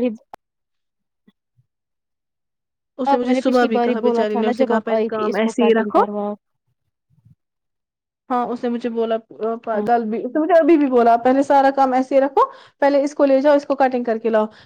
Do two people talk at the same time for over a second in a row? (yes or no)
yes